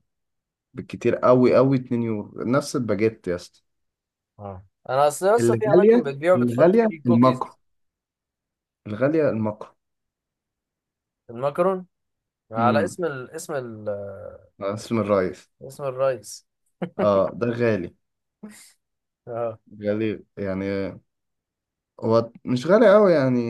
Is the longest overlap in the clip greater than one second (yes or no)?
yes